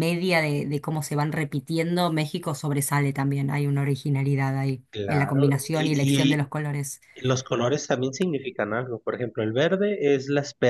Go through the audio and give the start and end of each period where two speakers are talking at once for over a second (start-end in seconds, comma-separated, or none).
4.9-6.5